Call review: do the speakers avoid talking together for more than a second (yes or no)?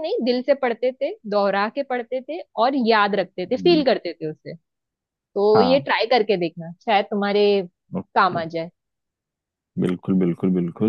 yes